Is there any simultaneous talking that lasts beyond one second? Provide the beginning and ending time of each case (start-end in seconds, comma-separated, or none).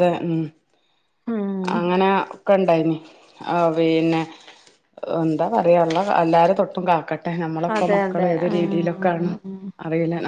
7.8-9.3